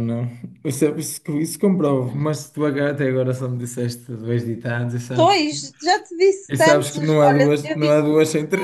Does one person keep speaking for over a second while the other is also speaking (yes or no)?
yes